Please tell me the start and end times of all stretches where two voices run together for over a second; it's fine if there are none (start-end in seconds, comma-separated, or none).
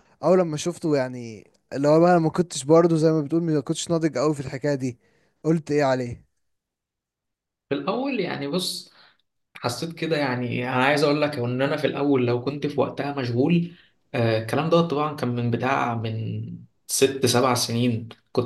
none